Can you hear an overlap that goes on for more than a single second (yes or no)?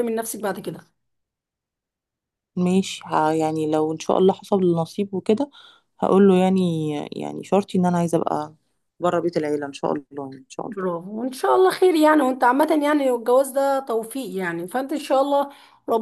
no